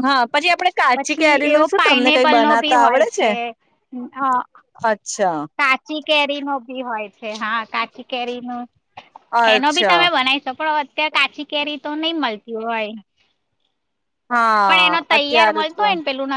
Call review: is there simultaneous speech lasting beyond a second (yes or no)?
yes